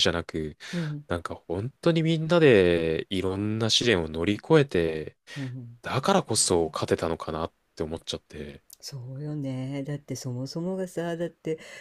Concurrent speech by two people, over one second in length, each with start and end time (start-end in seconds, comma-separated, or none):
none